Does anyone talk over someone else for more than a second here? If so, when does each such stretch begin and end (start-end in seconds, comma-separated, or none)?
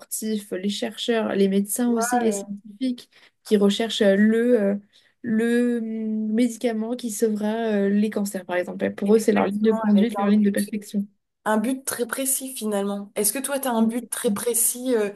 9.1-10.6